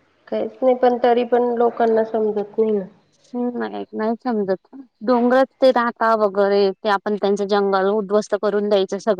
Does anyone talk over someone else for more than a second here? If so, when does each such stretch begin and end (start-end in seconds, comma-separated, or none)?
none